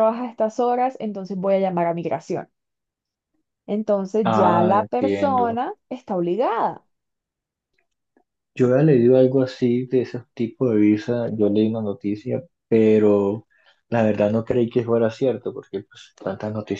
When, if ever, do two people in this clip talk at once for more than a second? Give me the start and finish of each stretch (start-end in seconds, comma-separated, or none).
4.2-5.6